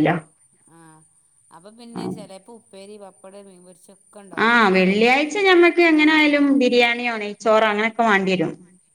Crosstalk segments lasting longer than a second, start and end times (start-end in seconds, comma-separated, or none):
none